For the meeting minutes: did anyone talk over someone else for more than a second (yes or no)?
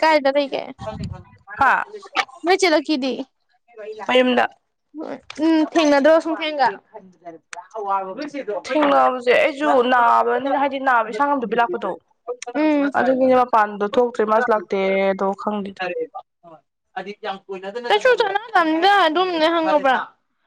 no